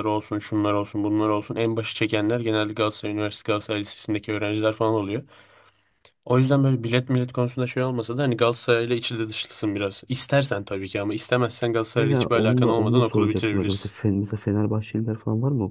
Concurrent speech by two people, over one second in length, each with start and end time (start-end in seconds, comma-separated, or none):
12.0-14.0